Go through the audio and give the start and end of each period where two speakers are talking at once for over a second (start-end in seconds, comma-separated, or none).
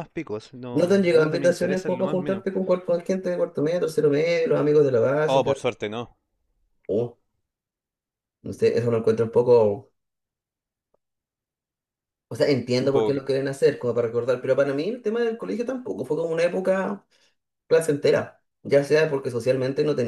0.7-2.4